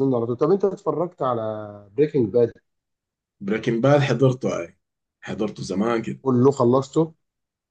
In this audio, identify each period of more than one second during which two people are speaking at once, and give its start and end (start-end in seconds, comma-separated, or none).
none